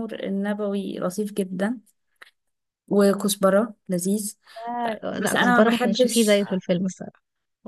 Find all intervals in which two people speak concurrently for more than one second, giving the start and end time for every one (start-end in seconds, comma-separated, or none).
5.1-6.4